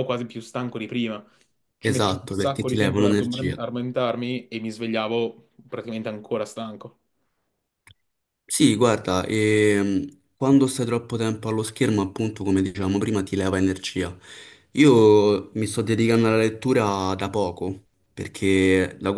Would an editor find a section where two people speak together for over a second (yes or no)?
yes